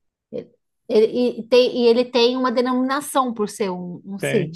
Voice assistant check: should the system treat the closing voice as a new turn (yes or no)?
yes